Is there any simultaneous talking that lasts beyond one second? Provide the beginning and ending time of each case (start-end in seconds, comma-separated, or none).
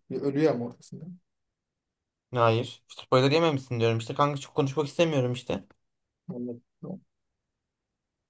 none